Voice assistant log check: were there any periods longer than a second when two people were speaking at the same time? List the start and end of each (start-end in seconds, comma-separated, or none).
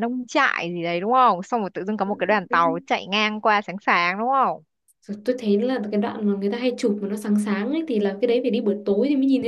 none